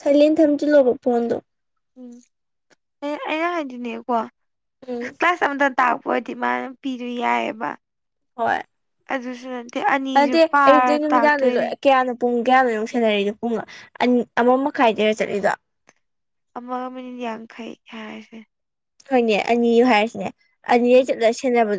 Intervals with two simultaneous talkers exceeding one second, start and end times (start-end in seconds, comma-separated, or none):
10.1-11.7